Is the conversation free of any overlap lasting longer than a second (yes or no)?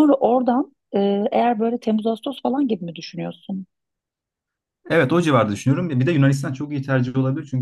yes